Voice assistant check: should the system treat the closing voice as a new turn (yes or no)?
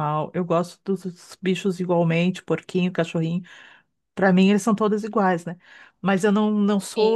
no